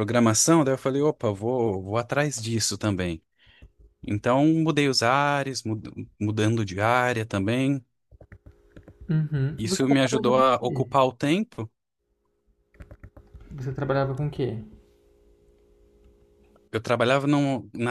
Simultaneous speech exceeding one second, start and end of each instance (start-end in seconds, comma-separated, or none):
9.6-10.9